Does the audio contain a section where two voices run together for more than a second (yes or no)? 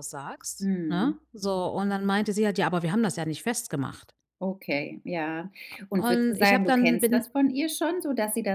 yes